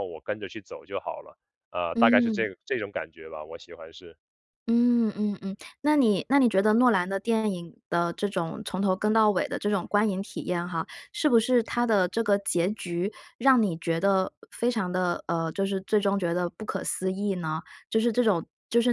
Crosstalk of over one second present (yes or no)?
no